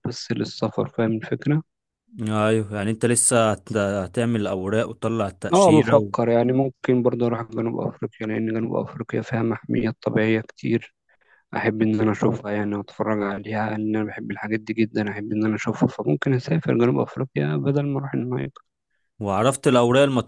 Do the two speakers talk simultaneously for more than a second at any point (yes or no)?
no